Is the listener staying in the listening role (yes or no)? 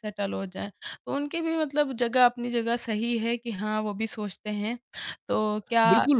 no